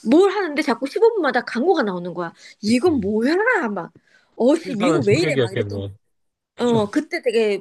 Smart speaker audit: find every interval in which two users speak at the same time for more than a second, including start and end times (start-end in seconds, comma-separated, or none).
4.6-5.8